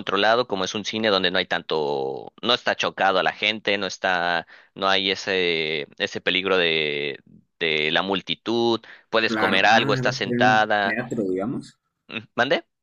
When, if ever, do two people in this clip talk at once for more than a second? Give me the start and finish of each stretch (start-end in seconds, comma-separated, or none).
9.3-11.0